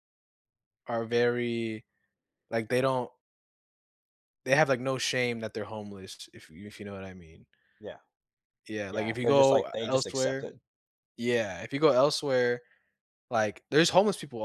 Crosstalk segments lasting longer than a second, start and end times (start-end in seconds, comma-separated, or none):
8.9-10.5